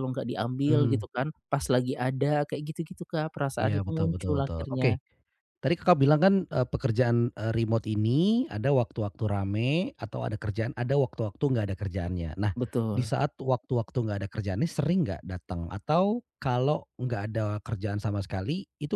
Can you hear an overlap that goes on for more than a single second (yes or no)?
yes